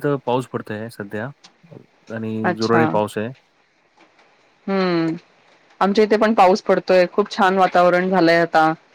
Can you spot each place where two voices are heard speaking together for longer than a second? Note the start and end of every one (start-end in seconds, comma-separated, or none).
none